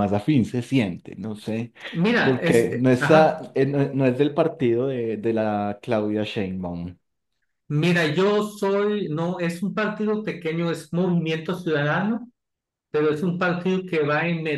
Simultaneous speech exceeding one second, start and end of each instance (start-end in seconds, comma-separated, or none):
2.2-3.5